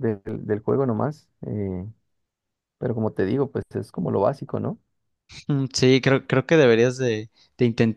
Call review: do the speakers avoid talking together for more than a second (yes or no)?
yes